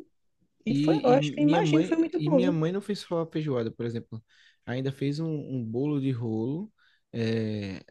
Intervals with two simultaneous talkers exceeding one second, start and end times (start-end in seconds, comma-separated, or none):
0.7-2.6